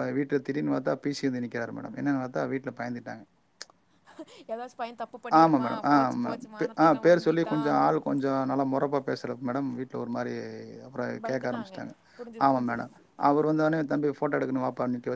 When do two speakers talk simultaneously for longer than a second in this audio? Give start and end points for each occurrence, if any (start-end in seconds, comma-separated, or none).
5.4-7.6